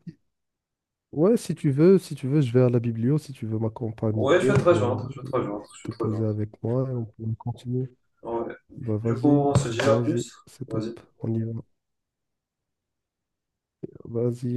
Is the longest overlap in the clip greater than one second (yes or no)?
yes